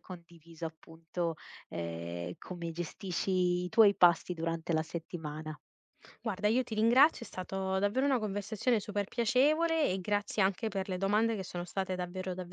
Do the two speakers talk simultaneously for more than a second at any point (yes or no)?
no